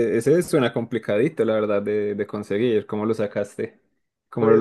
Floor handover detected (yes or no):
yes